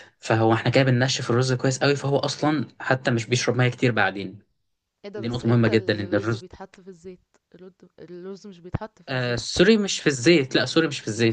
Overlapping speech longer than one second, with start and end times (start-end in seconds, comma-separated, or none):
5.2-6.4